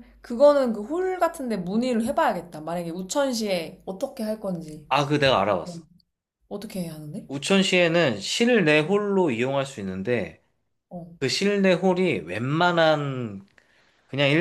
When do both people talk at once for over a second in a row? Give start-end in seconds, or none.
none